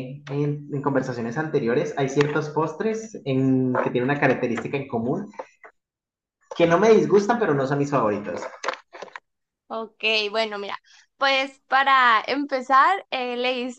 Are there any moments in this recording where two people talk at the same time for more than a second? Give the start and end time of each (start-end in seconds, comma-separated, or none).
none